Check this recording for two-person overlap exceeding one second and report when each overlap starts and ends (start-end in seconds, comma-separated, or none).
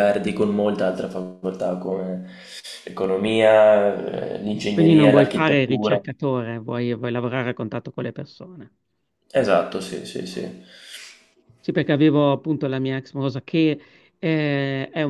4.7-6.0